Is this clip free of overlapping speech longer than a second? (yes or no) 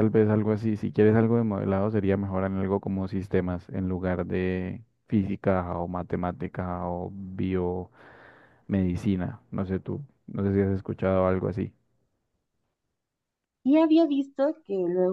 yes